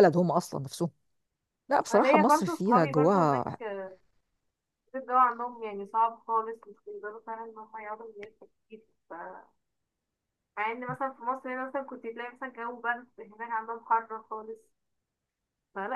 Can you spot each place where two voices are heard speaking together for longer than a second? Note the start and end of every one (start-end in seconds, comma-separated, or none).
1.9-3.5